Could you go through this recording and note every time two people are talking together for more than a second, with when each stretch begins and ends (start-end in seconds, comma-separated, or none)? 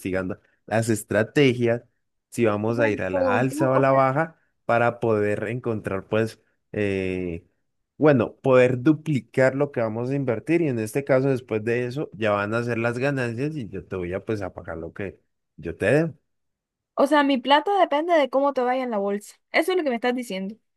2.6-4.0